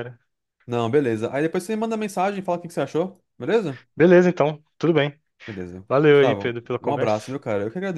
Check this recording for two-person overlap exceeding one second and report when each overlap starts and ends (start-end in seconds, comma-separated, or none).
5.9-7.3